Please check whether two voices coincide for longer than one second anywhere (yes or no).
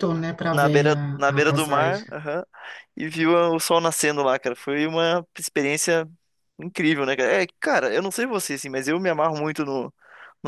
yes